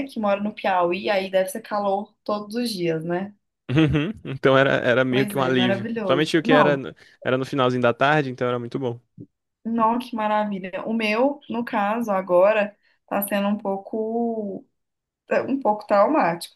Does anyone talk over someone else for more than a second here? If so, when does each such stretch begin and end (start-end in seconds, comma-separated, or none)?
5.1-6.8